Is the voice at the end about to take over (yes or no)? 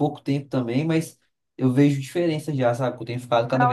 yes